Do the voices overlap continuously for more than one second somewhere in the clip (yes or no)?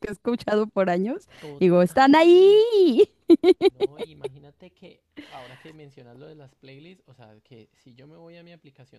no